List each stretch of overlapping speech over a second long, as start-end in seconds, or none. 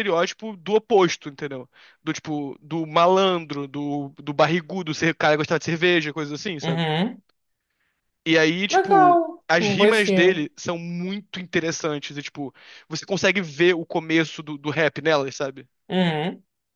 8.7-10.4